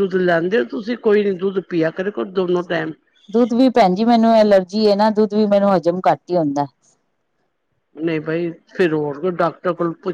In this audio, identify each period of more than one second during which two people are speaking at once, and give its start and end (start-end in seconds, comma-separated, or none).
none